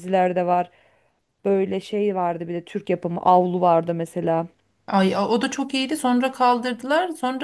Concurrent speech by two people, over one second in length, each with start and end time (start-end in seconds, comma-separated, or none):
none